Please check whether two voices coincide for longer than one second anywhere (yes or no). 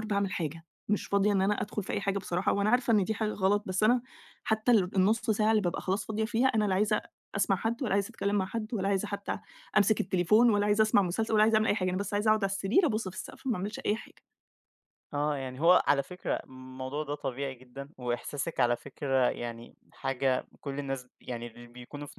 no